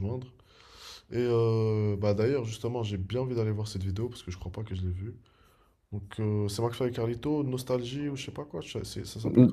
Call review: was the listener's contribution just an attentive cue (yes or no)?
no